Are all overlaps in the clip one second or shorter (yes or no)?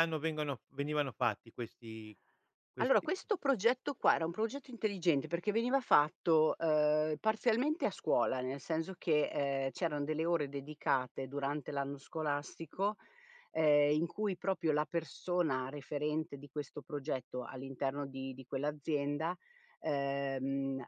yes